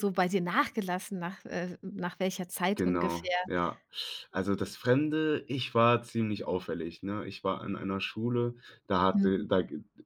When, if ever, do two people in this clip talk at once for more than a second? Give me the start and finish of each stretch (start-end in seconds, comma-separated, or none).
none